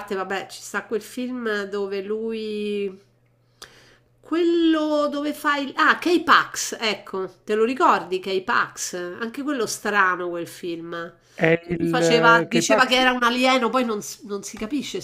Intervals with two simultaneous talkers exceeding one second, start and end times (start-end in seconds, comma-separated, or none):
11.7-13.0